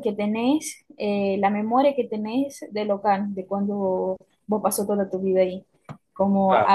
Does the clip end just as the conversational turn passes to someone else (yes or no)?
no